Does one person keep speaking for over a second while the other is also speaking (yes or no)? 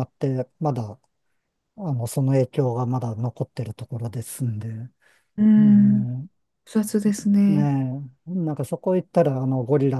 no